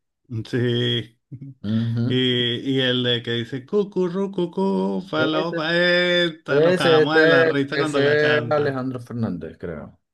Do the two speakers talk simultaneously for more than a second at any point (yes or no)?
yes